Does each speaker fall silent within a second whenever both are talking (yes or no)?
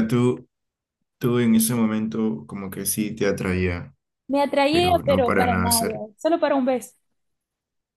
no